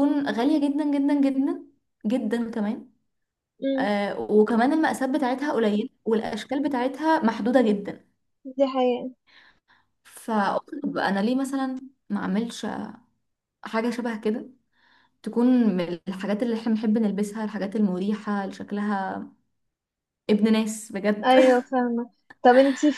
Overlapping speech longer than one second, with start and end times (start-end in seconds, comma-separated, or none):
none